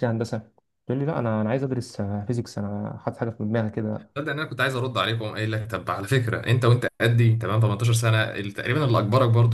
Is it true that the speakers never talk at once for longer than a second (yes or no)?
yes